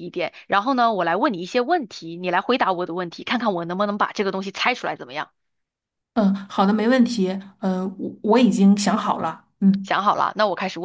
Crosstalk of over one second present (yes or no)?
no